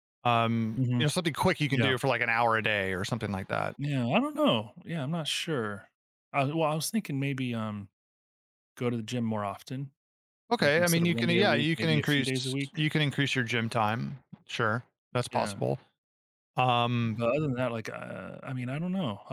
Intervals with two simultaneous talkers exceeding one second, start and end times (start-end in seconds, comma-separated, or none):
10.6-12.8